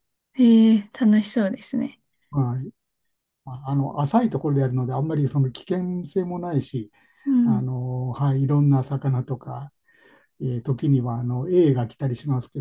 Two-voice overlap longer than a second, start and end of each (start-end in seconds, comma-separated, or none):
none